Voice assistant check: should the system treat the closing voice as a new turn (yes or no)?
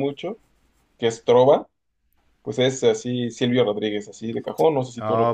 yes